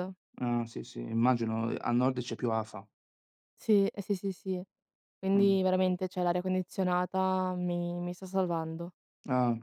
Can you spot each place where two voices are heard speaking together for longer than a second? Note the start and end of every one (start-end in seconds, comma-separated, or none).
none